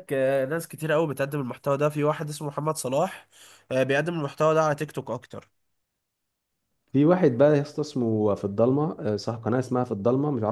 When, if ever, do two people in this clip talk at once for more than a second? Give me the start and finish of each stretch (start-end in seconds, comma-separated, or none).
none